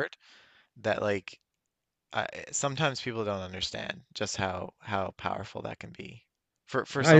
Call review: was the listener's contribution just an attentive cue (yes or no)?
yes